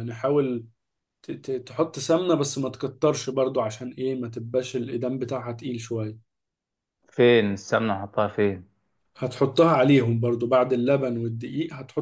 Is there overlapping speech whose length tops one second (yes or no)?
no